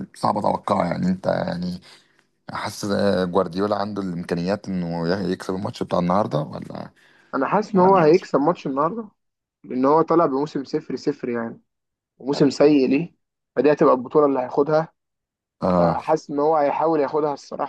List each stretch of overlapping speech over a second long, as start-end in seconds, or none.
none